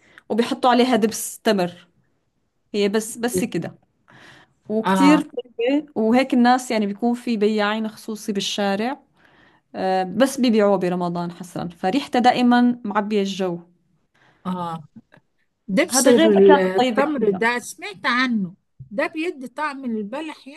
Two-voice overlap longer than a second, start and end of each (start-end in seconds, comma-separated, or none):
15.9-17.4